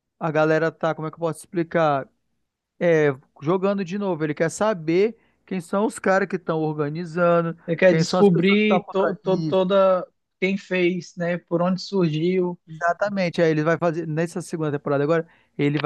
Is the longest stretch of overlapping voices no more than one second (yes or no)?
no